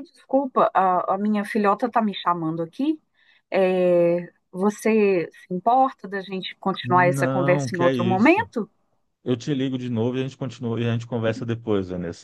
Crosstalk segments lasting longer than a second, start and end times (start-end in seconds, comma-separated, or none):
6.8-8.5